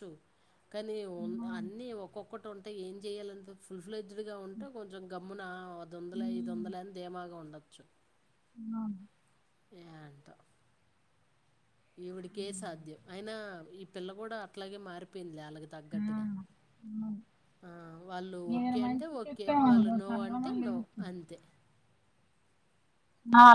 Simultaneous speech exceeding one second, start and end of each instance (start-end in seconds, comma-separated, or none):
18.5-21.0